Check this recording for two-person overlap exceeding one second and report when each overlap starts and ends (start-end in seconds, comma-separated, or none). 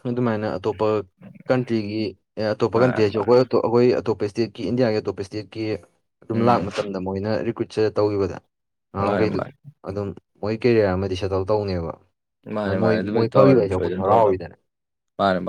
12.7-14.4